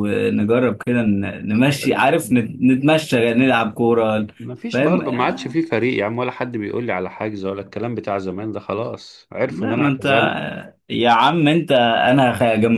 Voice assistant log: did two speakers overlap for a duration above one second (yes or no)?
no